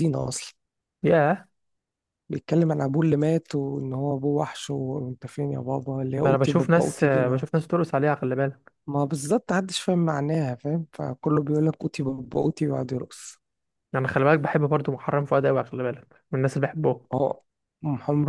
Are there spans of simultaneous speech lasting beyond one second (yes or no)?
yes